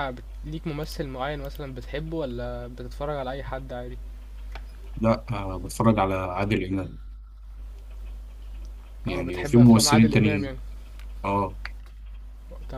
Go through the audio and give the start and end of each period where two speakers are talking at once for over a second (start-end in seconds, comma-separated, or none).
9.1-10.6